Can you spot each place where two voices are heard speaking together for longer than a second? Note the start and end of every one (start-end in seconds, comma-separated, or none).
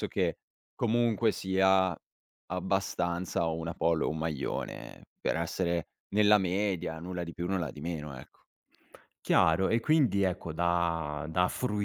none